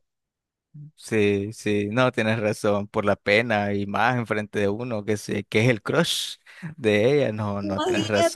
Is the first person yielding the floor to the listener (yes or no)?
yes